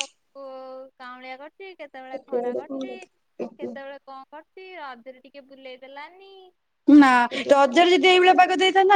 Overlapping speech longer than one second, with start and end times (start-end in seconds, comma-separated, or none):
none